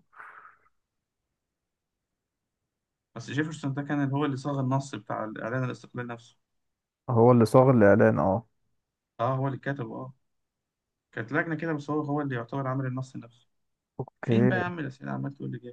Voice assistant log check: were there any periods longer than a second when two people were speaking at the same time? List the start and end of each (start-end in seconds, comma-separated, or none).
none